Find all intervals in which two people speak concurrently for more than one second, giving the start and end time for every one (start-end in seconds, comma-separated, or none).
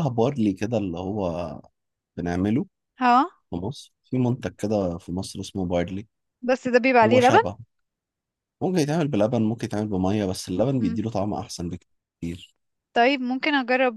none